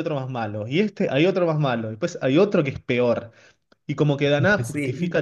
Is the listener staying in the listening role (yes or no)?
yes